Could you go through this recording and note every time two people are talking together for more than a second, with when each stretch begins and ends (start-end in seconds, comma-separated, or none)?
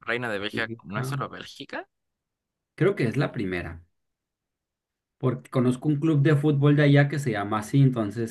none